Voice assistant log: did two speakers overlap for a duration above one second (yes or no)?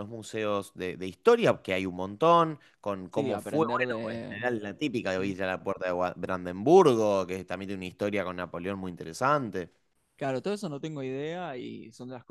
no